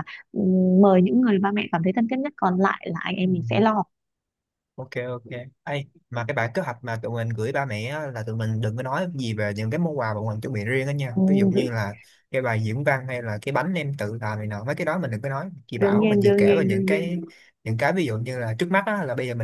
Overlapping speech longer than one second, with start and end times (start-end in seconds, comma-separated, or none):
15.8-17.1